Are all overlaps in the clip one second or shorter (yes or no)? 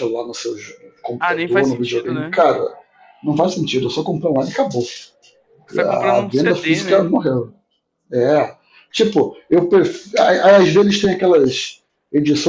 no